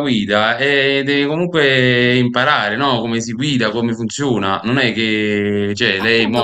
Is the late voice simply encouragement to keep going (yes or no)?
no